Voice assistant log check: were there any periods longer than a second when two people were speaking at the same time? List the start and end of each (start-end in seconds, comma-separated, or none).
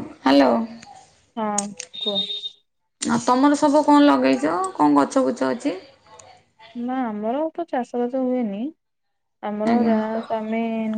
none